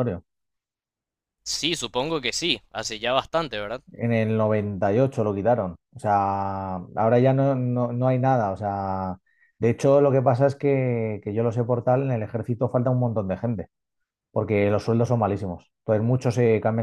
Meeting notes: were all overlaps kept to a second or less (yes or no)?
yes